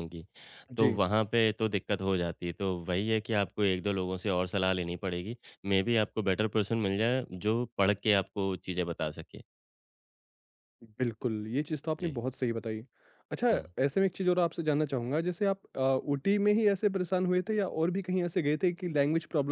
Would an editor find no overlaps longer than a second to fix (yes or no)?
yes